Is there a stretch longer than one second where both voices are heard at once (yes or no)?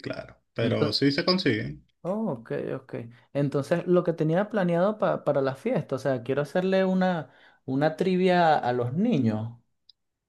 no